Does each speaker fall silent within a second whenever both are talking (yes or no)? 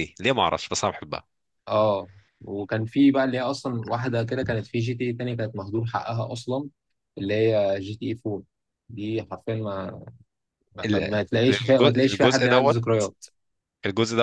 no